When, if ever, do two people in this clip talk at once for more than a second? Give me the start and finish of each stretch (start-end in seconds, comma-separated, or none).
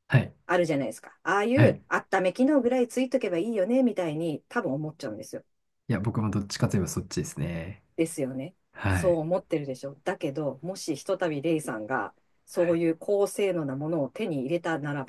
none